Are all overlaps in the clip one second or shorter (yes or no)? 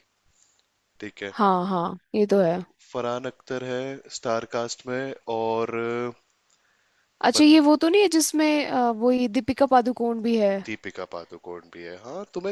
yes